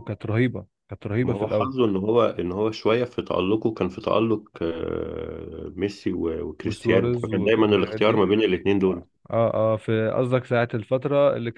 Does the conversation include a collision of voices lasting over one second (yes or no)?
yes